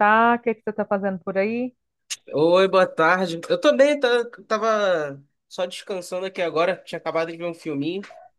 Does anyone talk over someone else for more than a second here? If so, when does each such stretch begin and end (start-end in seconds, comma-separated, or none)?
none